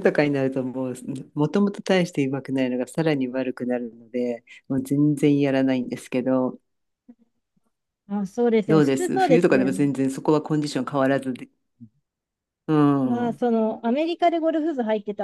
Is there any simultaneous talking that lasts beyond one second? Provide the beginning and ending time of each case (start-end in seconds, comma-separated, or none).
8.7-9.9